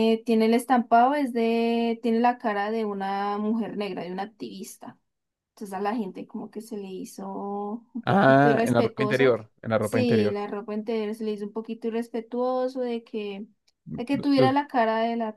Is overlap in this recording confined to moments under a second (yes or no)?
no